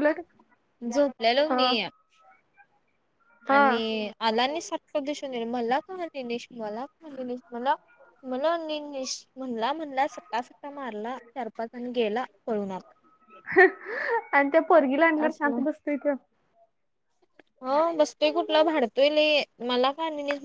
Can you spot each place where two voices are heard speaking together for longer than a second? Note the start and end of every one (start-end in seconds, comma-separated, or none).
none